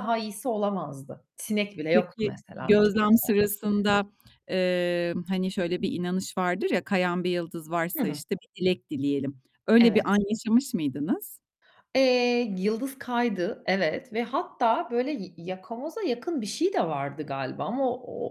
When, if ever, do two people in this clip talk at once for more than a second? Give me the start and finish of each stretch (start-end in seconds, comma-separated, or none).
1.9-3.5